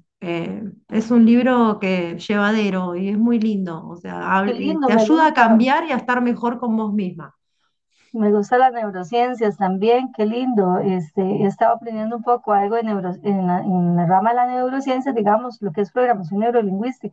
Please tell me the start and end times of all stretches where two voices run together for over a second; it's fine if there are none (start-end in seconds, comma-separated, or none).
4.4-5.7